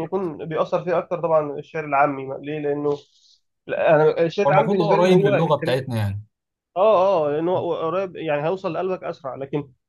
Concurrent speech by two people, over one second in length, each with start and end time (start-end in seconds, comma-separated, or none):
4.5-5.8